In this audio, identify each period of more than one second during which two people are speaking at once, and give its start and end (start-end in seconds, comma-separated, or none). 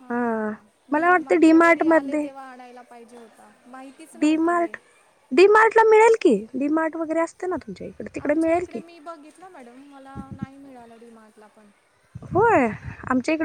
0.9-2.3